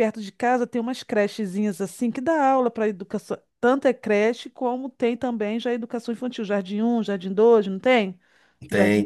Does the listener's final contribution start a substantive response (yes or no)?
yes